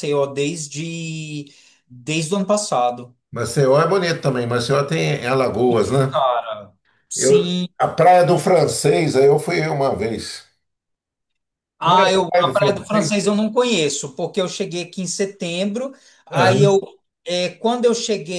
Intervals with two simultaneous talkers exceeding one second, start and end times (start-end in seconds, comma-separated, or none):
11.8-13.3